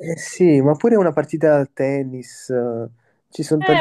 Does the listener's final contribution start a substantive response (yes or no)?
yes